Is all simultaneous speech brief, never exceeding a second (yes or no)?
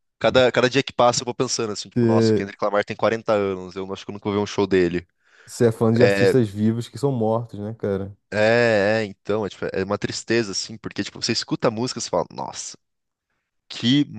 yes